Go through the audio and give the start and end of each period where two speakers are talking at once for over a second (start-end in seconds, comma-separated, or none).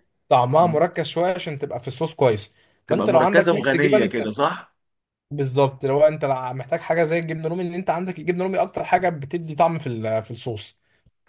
2.9-4.1